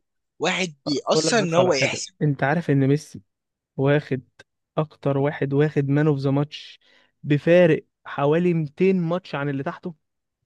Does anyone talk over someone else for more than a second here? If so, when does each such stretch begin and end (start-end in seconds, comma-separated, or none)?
0.9-2.1